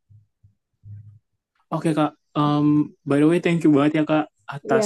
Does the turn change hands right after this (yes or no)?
no